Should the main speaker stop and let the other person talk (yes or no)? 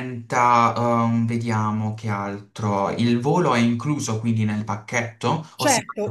yes